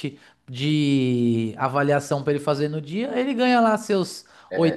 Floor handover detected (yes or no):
no